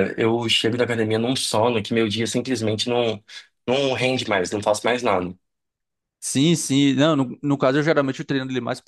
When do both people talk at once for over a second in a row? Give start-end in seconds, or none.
none